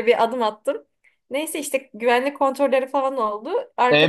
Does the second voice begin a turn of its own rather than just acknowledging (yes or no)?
yes